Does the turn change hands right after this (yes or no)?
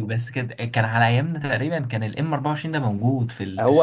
yes